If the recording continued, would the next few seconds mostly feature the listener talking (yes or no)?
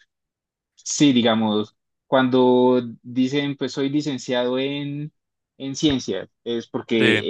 no